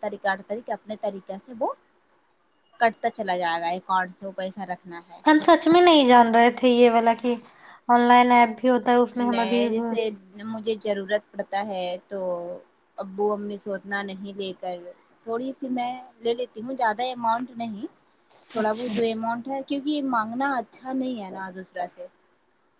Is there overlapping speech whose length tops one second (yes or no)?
no